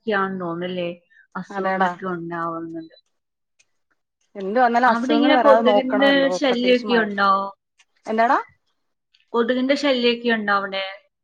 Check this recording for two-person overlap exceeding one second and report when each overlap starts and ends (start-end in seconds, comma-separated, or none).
4.9-7.2